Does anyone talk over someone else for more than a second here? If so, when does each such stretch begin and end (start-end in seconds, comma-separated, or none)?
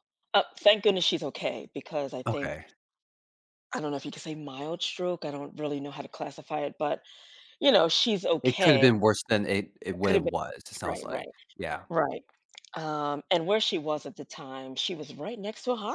10.0-11.3